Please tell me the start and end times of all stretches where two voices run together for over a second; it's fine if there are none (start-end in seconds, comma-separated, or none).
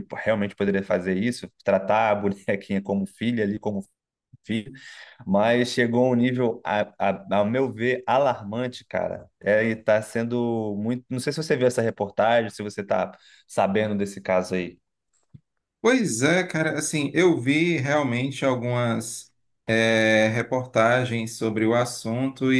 none